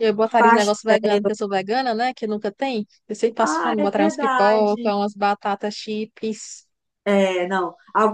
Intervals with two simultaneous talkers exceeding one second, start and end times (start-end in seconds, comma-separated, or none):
3.4-4.9